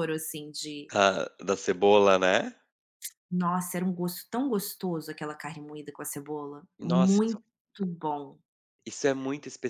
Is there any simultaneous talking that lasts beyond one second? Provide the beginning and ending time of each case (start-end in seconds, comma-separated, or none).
none